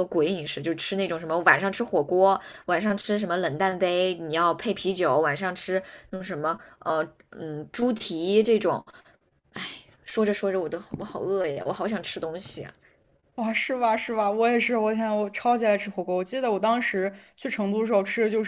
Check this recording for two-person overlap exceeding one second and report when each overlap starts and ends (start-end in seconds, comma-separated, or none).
none